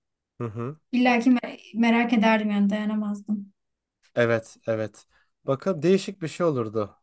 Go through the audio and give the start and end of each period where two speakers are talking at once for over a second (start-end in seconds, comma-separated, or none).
none